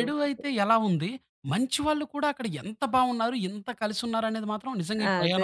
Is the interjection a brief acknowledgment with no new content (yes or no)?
no